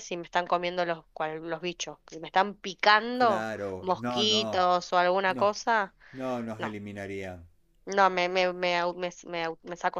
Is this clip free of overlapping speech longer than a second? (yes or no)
no